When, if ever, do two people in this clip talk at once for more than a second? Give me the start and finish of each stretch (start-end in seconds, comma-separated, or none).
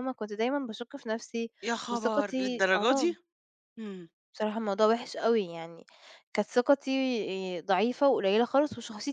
1.9-3.1